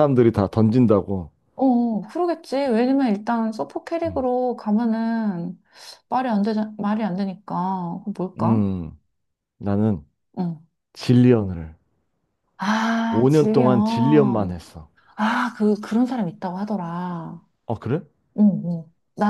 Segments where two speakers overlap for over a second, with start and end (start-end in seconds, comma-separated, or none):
13.1-14.6